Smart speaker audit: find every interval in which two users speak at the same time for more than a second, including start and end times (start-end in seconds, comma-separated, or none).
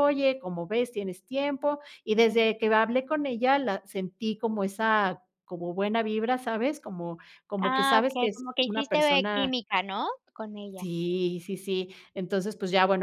7.6-9.5